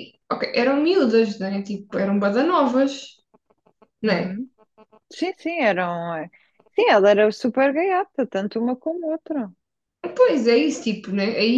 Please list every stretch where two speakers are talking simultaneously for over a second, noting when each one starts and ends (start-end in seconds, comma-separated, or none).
none